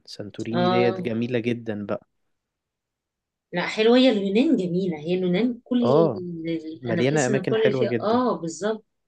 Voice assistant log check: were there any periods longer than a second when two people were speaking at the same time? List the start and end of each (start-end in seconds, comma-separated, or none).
6.8-8.2